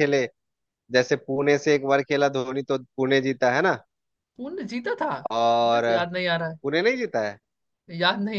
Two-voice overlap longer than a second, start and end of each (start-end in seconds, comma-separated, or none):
none